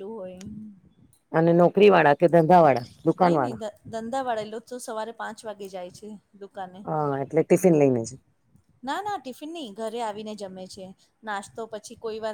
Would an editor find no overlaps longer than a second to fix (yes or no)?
yes